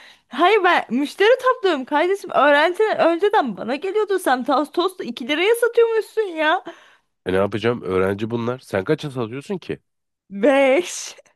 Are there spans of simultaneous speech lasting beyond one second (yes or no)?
no